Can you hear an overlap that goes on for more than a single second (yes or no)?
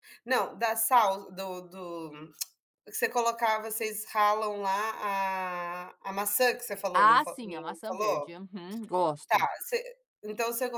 yes